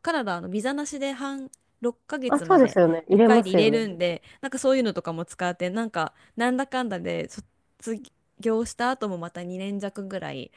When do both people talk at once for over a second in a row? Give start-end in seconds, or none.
2.3-3.9